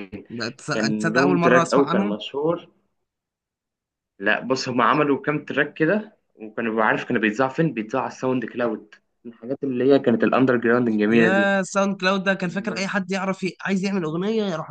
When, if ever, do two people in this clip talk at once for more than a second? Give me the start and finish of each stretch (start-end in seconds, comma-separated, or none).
0.7-2.2